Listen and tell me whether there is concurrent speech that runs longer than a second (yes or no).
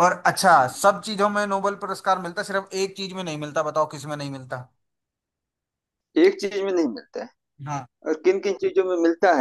no